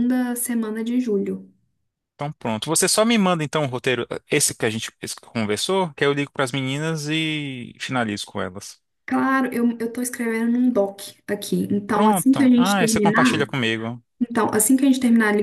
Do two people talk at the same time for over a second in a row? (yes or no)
yes